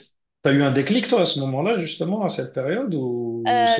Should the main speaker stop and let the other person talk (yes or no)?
yes